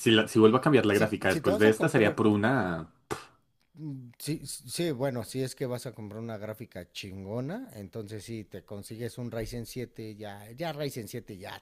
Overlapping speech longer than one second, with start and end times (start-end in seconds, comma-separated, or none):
0.8-2.2